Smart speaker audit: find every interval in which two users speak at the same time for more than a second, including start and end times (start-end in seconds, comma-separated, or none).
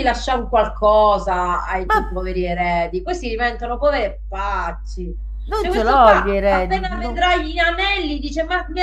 5.6-7.3